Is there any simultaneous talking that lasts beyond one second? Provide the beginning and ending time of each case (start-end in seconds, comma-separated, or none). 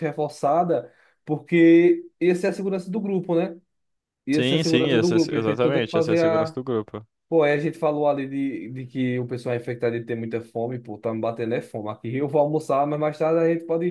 4.3-6.6